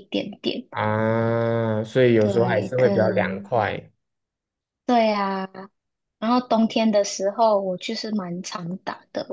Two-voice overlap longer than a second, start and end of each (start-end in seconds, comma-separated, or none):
2.2-3.5